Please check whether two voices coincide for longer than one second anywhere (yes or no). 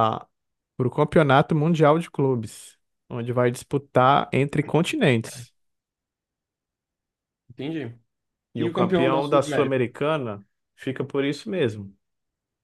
yes